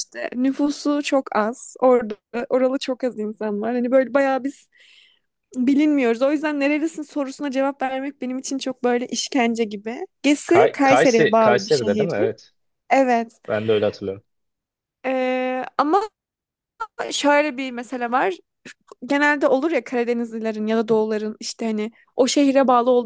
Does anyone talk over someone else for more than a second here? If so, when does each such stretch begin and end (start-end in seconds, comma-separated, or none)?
10.5-12.1